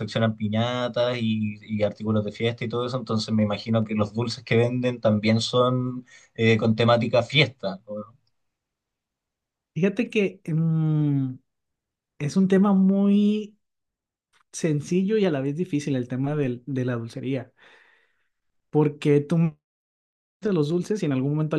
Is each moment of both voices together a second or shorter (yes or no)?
yes